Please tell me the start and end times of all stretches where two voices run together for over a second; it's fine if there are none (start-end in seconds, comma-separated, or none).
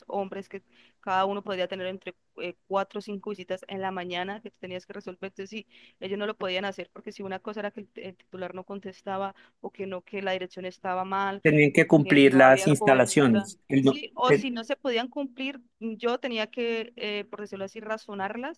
11.4-14.5